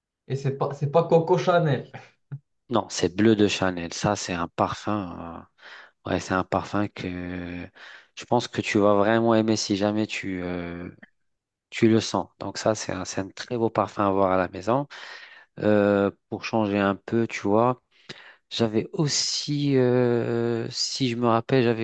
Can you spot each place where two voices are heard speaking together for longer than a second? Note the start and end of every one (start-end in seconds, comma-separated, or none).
none